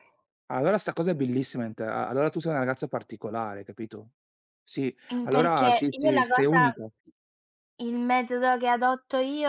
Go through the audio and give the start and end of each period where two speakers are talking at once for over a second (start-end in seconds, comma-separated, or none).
5.1-6.7